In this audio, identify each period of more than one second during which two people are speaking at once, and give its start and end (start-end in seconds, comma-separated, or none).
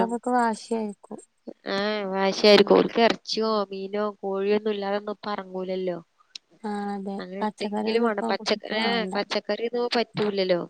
7.2-9.1